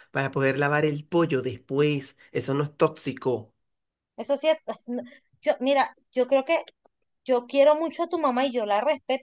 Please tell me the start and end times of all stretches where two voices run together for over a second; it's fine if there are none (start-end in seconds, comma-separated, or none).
none